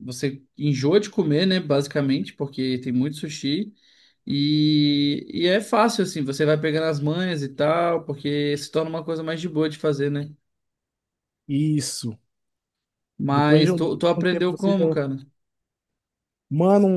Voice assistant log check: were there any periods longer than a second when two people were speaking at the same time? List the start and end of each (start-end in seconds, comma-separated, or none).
13.3-14.8